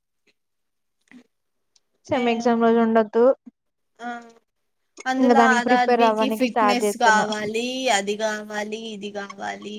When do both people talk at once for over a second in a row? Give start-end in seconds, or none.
5.2-7.3